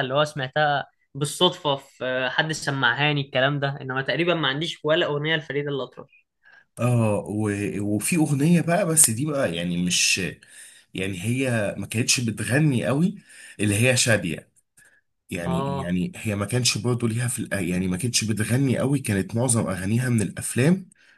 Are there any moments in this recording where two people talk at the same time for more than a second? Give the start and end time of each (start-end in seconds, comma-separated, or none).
none